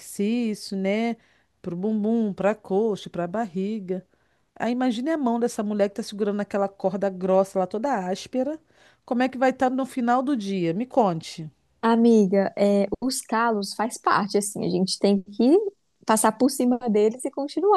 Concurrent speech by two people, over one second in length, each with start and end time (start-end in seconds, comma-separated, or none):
none